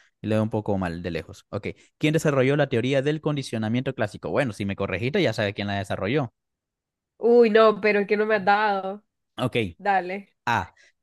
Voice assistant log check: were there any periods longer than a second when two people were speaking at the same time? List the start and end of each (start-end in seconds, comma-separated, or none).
none